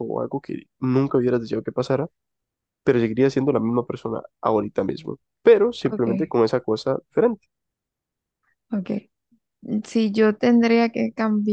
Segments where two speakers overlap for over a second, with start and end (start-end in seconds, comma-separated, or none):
none